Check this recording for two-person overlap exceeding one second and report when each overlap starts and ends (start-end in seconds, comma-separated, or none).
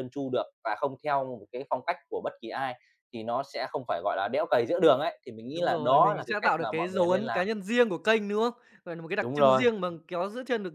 5.5-7.5